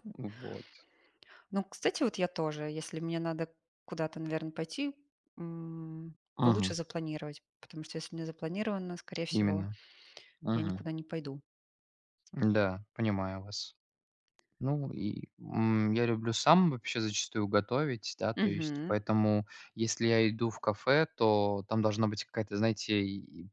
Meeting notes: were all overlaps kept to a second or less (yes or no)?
yes